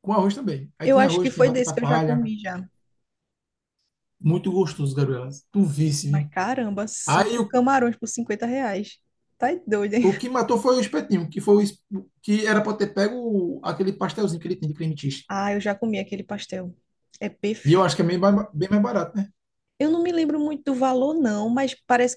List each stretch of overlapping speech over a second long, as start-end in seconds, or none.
0.8-2.3